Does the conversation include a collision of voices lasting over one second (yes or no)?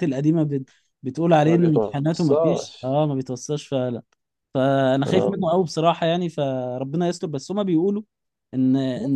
yes